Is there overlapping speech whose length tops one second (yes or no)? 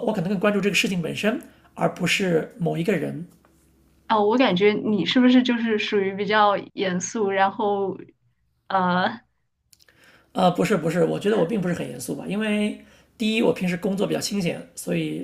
no